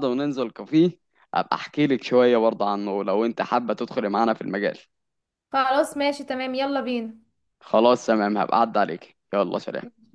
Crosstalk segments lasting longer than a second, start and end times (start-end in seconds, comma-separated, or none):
none